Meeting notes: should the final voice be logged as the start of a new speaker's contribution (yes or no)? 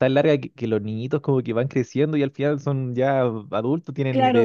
yes